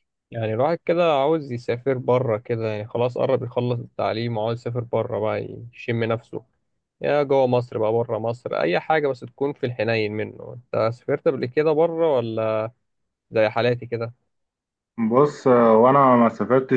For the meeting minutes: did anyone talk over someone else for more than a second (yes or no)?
no